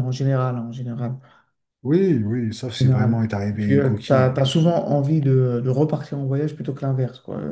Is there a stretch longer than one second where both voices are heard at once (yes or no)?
yes